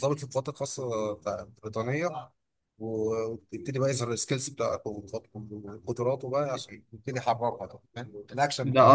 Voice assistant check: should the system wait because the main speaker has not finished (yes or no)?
no